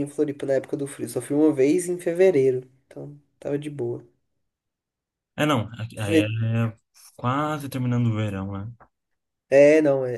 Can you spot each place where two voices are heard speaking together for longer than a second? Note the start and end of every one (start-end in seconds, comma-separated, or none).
none